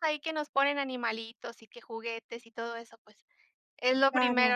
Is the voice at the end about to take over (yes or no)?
no